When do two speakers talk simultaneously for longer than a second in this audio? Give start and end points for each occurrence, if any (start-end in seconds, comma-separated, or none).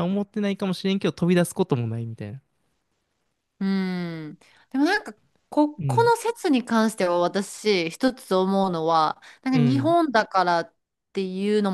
none